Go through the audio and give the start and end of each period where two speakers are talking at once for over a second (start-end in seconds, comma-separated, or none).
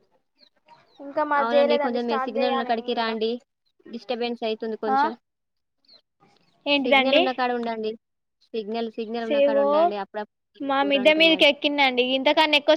1.4-3.1